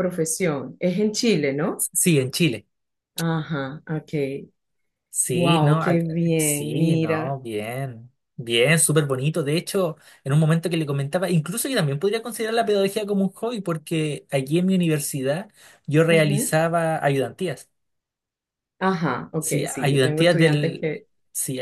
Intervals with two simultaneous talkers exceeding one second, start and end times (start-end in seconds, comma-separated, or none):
5.3-7.4, 19.4-20.9